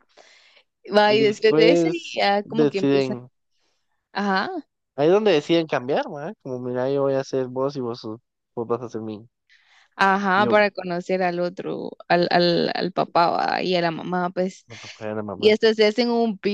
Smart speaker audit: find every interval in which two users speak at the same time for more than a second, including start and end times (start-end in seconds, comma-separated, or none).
1.0-3.2